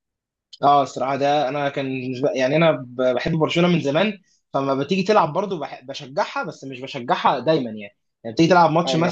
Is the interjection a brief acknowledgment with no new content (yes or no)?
yes